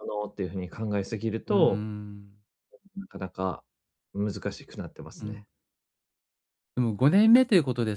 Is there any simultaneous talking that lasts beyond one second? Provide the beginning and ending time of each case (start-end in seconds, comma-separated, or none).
none